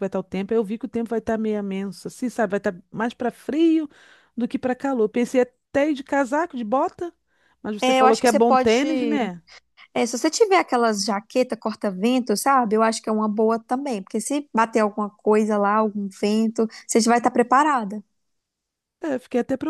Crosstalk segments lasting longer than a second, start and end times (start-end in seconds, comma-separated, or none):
7.8-9.3